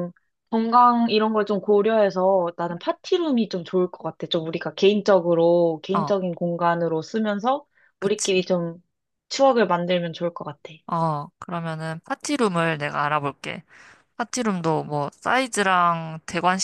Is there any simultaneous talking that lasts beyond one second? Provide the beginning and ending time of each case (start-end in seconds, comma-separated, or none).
none